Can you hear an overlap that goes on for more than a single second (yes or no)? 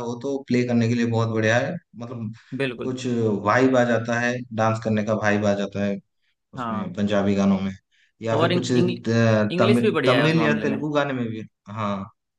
yes